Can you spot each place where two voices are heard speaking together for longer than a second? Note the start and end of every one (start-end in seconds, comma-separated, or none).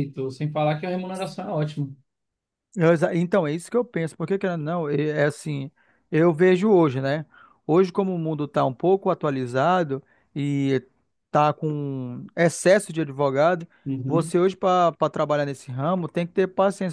none